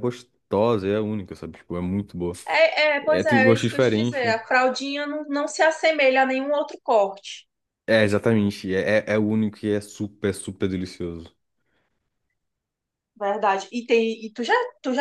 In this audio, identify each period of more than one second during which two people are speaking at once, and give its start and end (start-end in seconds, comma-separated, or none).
3.0-4.2